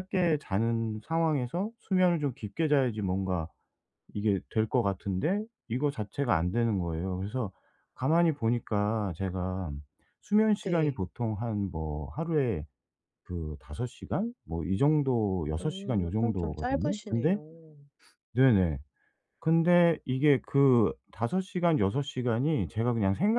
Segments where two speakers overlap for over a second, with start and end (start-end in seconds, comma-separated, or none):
15.6-17.4